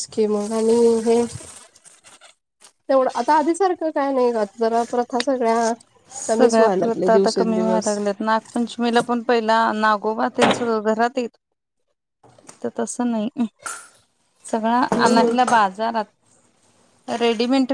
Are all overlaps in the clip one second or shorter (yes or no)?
no